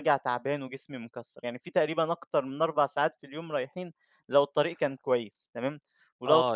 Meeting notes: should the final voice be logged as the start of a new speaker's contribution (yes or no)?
yes